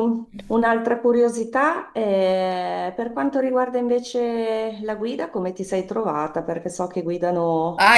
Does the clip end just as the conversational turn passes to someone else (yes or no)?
yes